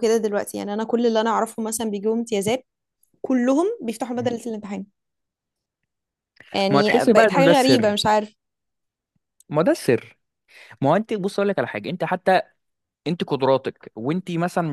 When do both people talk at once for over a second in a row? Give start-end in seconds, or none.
6.7-7.9